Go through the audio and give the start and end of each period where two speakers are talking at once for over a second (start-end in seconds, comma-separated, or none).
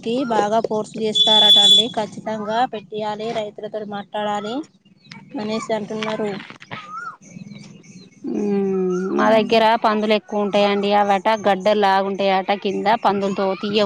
none